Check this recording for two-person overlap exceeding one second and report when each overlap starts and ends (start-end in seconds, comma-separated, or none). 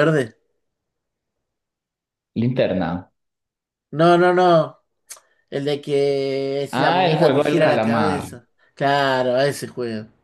6.7-8.3